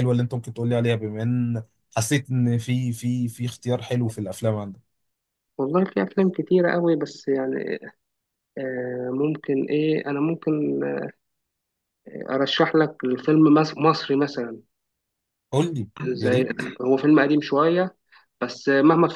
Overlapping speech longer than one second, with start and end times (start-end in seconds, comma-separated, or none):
none